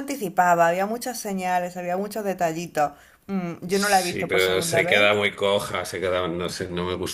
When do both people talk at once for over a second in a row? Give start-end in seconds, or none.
3.7-5.3